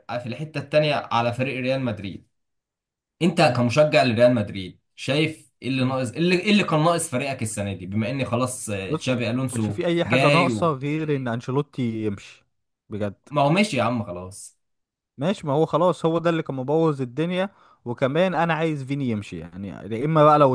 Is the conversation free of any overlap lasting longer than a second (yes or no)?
no